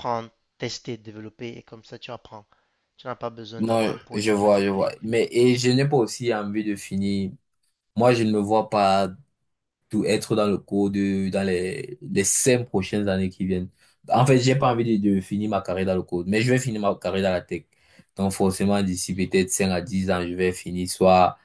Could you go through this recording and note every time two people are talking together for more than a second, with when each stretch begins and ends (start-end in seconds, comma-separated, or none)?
3.6-4.9